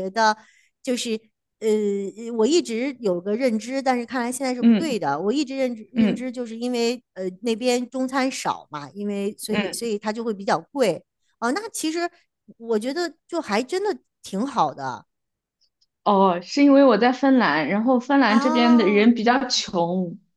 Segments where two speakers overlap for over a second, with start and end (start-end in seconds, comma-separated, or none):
18.3-19.5